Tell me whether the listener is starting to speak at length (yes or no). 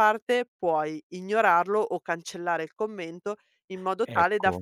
no